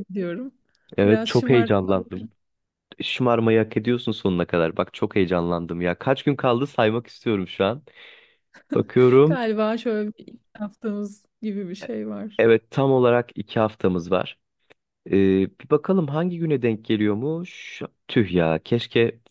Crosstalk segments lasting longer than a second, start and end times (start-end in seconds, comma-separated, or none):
1.0-2.3